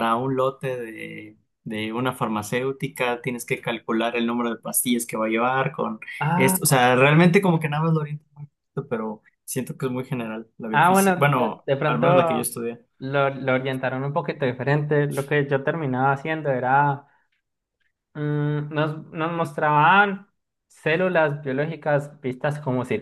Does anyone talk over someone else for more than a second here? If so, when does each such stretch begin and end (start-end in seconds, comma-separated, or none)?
10.7-12.1